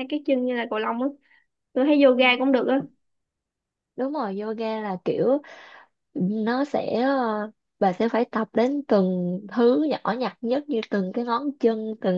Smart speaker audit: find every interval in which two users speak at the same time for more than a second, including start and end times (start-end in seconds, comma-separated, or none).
none